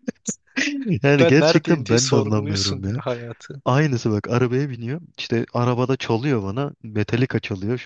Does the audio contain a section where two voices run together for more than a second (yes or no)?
yes